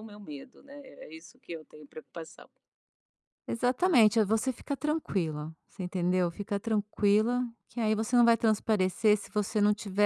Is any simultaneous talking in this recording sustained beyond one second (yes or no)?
no